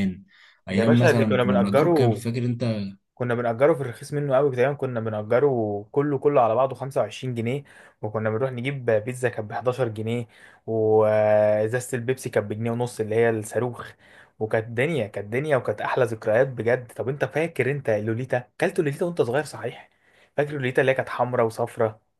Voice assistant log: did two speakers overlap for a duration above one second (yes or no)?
yes